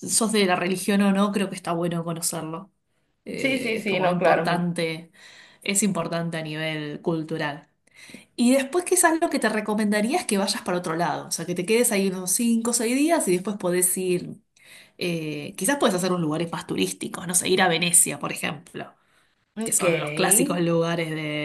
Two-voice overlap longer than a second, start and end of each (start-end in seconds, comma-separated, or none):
3.4-4.7